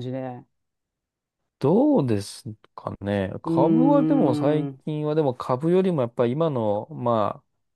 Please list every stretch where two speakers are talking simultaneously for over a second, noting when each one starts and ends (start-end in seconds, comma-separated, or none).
3.5-4.8